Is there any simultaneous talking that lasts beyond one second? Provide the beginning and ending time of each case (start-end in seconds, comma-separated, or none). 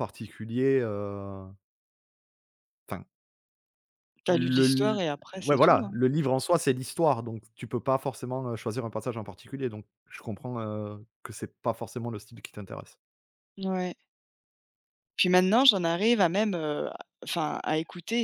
4.3-5.9